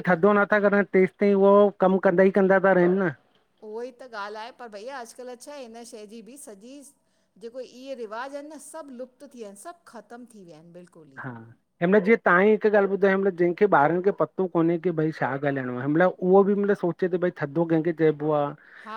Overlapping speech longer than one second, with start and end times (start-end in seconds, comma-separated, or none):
none